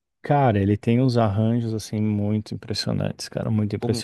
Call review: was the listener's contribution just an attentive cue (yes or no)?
no